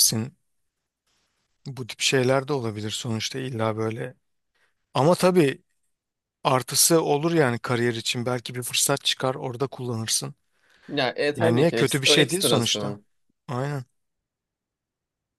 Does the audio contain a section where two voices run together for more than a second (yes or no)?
yes